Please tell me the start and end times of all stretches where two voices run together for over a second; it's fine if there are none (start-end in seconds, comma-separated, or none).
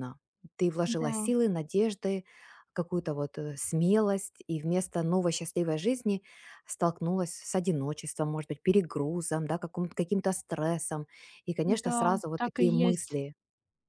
11.7-13.2